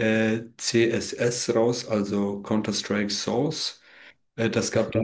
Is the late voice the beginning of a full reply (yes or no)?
no